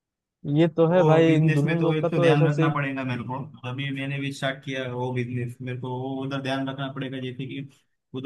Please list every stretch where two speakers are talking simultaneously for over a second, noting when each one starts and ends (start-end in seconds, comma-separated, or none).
0.9-2.7